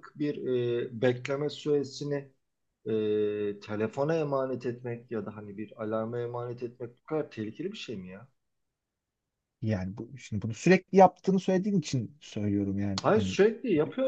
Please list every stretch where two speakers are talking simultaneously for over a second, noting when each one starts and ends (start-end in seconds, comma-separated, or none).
none